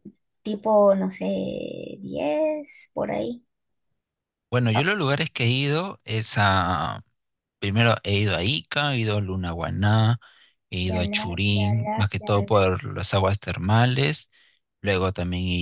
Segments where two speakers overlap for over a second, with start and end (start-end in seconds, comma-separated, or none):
10.9-12.6